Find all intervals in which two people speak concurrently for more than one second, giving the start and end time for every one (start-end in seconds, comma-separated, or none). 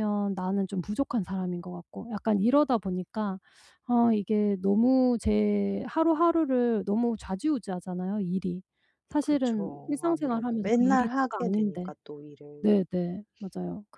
9.2-11.9